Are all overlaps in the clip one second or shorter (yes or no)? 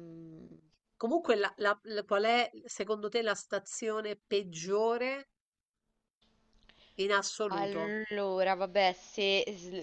yes